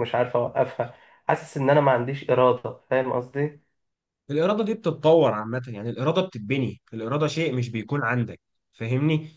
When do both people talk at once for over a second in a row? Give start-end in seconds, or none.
none